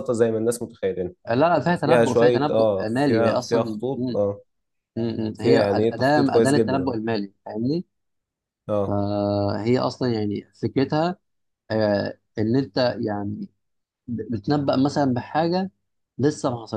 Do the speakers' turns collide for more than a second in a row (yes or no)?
yes